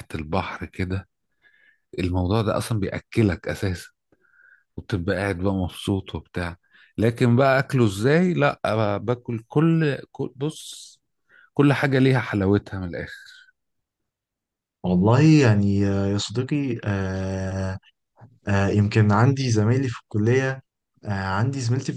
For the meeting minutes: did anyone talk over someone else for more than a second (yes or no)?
no